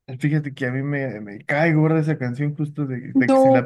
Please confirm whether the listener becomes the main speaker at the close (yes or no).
no